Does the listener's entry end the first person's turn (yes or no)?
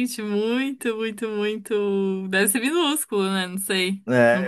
yes